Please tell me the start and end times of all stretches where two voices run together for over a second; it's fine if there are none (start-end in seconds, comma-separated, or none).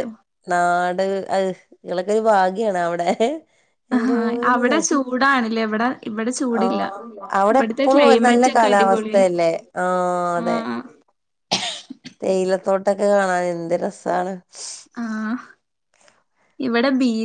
7.5-9.2